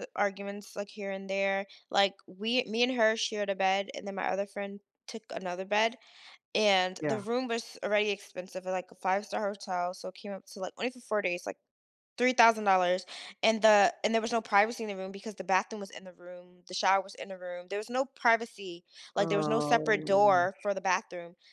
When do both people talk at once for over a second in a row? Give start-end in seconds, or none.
19.2-20.5